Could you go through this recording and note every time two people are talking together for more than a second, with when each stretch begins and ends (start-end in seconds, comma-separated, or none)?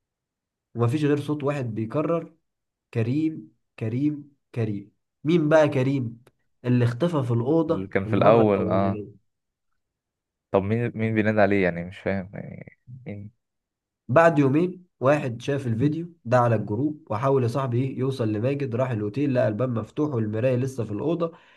7.7-9.0